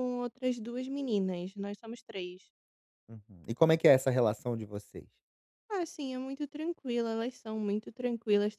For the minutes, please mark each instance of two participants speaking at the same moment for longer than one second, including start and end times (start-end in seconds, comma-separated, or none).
none